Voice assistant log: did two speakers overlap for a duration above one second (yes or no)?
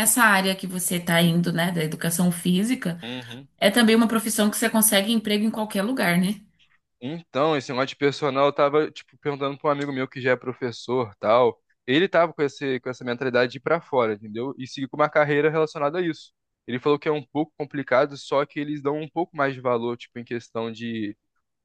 no